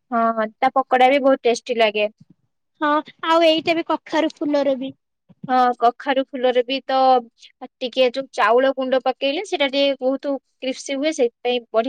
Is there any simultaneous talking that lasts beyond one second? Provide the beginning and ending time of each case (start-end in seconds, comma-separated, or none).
none